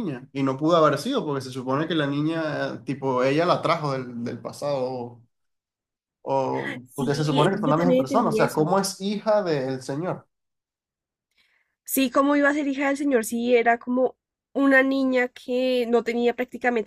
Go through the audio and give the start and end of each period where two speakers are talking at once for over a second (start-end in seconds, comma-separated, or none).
6.8-8.7